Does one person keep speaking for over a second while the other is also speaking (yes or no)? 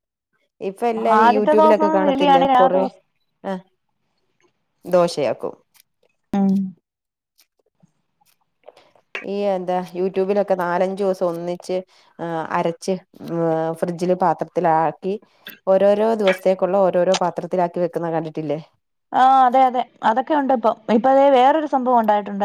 yes